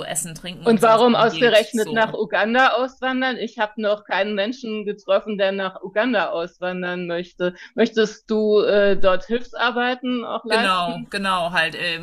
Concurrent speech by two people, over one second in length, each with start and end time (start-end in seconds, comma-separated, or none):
0.6-2.2